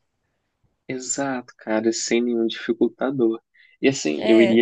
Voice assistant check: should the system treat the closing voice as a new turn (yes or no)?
no